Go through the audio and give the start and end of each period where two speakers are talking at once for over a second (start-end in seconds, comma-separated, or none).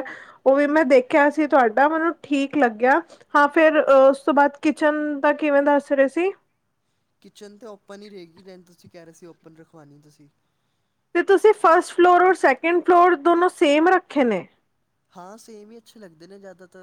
none